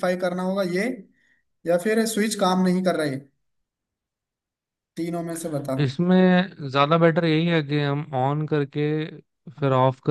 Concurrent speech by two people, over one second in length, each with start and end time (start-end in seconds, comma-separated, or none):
none